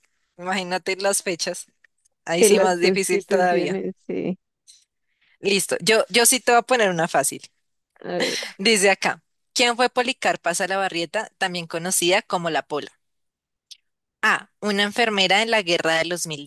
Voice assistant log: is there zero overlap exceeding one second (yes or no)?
no